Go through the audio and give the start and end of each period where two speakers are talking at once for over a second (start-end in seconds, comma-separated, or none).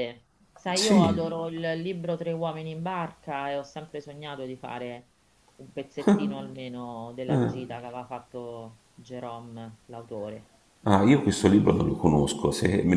none